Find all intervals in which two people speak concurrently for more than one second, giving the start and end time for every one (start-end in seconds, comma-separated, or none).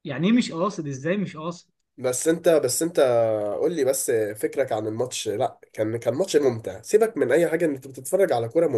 none